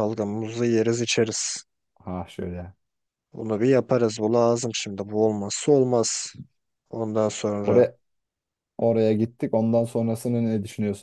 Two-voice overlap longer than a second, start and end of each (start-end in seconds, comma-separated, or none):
none